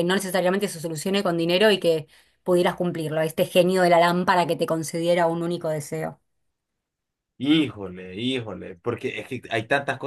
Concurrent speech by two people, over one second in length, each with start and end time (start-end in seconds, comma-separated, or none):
none